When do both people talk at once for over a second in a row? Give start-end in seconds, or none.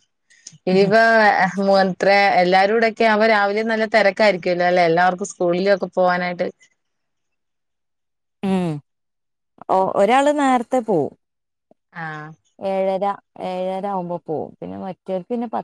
none